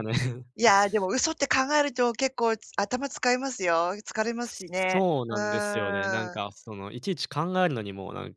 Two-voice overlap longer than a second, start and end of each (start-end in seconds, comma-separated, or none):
4.9-6.4